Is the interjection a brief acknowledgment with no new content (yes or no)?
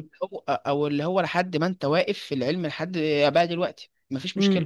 no